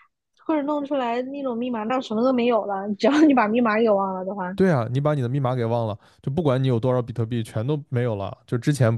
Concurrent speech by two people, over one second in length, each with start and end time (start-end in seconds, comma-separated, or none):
none